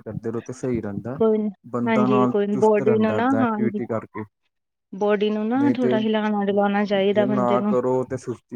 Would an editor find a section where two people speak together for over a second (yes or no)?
yes